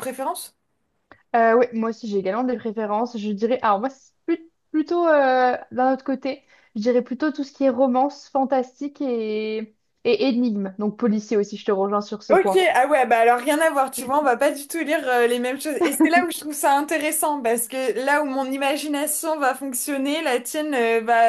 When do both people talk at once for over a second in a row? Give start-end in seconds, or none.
none